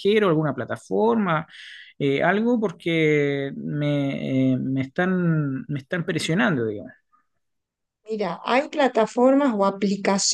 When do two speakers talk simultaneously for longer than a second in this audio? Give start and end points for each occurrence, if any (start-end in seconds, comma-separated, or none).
none